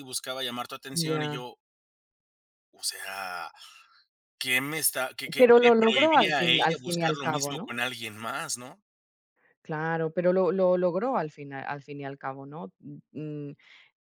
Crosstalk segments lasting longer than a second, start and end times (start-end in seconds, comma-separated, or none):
5.4-7.8